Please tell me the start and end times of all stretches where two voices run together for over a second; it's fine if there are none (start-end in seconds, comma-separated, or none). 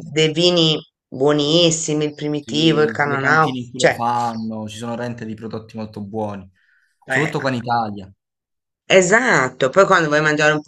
2.4-4.0